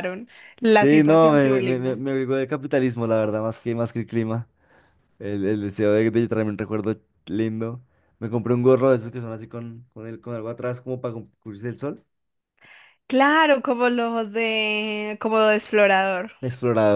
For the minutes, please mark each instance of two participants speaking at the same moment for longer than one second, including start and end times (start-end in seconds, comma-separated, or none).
0.6-2.0